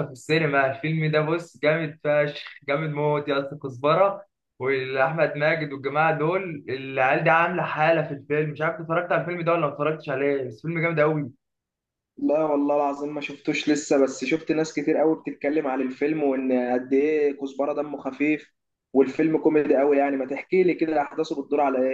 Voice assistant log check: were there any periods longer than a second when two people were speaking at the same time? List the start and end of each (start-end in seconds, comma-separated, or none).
none